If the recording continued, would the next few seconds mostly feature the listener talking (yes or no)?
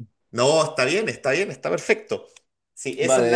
yes